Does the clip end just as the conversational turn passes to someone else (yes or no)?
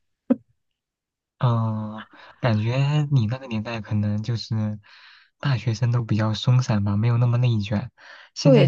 yes